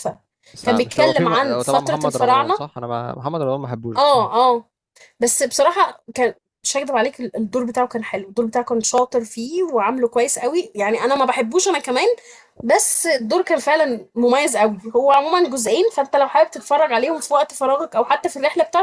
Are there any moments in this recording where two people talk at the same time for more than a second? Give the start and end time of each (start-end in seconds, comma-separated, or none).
0.6-2.6